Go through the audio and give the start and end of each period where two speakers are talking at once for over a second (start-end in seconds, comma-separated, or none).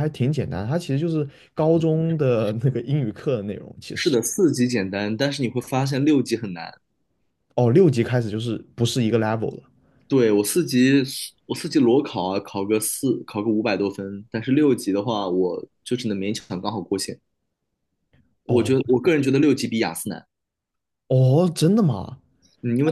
none